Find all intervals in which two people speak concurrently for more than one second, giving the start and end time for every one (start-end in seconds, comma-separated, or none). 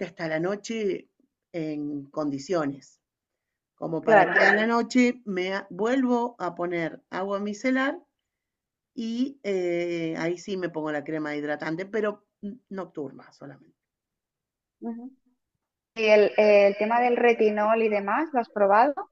none